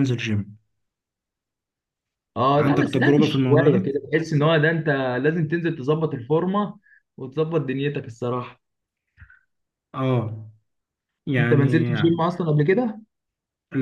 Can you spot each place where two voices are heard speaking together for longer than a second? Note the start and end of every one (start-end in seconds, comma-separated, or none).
2.6-3.9